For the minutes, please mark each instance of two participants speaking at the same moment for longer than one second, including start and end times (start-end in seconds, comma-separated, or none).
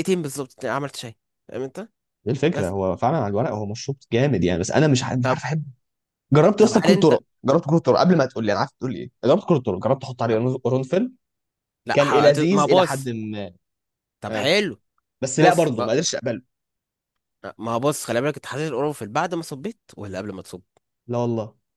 11.9-13.1